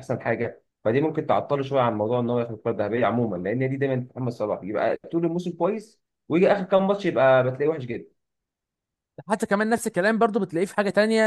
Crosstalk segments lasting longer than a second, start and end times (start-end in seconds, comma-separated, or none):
none